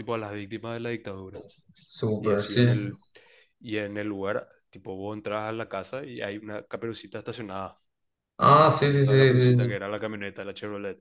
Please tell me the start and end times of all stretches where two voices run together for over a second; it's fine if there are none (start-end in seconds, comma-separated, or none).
8.5-9.8